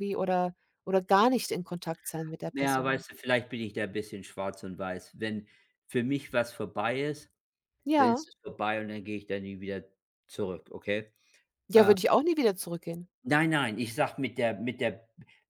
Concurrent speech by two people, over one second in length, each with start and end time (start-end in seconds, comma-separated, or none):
none